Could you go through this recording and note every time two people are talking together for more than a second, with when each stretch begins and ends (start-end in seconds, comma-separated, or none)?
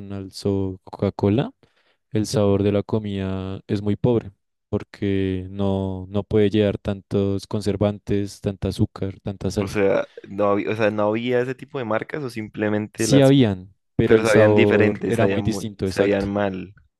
14.0-16.3